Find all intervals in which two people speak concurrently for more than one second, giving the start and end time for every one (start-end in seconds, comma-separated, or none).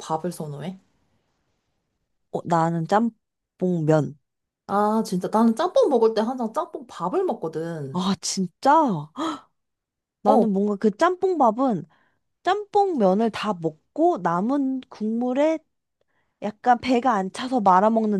none